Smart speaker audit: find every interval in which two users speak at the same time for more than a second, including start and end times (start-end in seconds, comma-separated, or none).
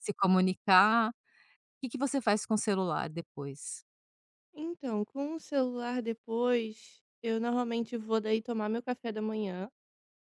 none